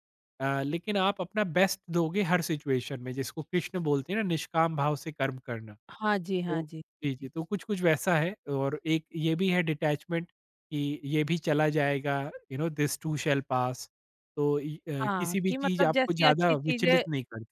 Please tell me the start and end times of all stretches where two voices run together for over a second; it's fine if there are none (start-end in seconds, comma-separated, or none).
15.2-17.0